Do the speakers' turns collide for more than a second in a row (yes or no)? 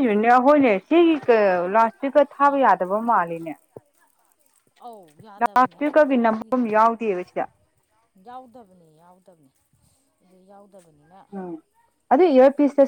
yes